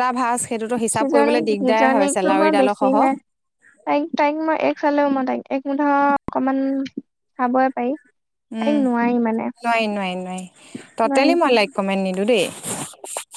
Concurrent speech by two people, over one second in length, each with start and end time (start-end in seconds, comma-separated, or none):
0.9-2.9